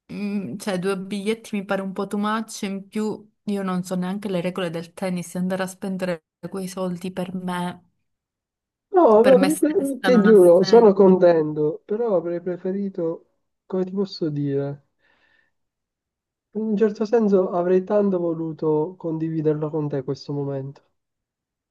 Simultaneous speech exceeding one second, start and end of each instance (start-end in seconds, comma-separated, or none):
9.2-11.1